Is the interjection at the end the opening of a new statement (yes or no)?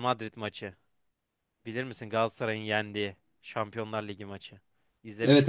yes